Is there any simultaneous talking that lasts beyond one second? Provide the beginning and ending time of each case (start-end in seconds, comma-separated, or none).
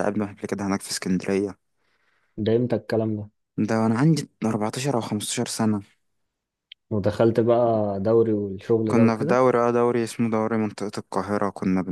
none